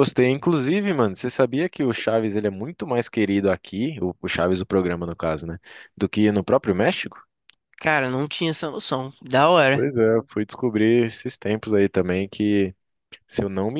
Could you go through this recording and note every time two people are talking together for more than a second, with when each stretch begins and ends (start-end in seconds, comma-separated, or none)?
none